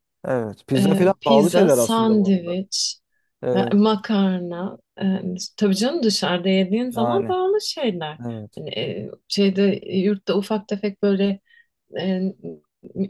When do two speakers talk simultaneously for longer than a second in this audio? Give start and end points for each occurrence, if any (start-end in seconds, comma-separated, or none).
0.8-2.6